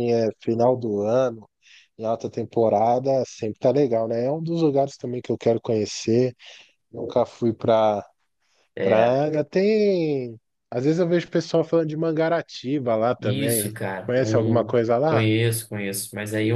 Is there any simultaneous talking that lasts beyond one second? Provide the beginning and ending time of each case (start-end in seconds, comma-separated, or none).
13.2-15.2